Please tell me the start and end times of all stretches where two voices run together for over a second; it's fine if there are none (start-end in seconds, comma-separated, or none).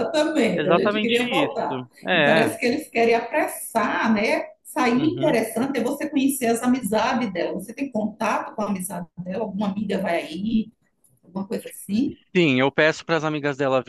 0.6-2.5